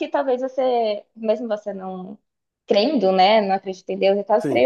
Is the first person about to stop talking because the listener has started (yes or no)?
no